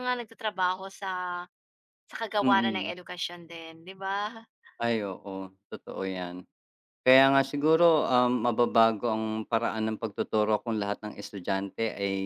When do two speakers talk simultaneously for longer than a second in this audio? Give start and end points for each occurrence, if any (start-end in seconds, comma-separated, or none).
none